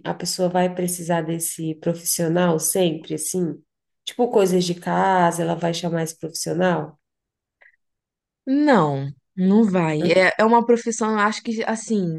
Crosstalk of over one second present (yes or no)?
no